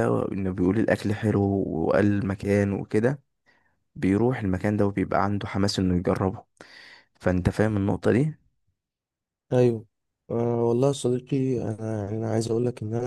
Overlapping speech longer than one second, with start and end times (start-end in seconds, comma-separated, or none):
none